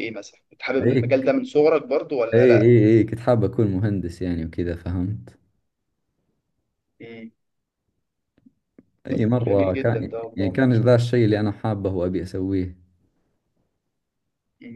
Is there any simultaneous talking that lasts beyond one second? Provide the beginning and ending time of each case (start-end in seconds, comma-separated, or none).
9.4-10.9